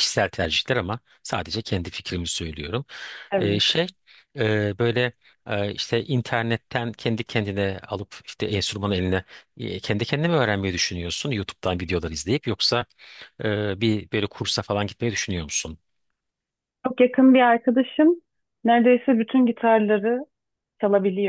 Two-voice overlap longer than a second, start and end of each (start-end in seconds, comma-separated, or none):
none